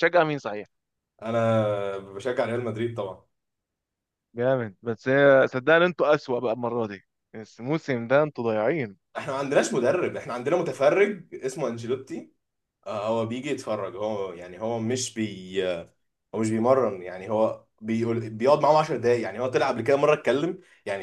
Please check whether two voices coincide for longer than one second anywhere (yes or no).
no